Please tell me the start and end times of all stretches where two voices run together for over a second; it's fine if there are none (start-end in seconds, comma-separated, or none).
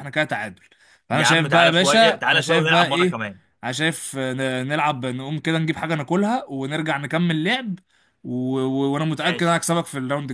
1.1-3.2